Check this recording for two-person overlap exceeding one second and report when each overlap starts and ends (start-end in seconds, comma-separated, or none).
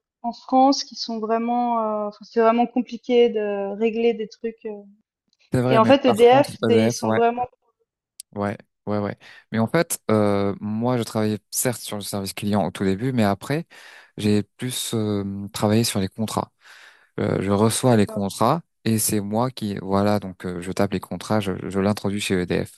5.7-7.2